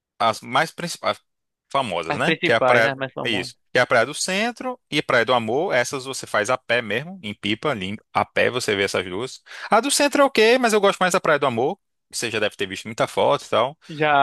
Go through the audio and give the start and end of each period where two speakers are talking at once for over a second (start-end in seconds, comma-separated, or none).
2.1-3.5